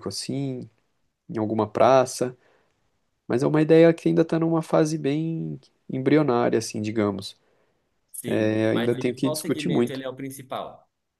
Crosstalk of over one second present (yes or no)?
yes